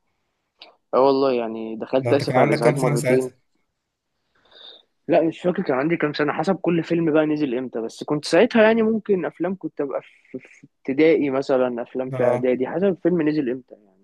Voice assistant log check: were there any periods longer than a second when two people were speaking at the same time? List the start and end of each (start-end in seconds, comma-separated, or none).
2.0-3.3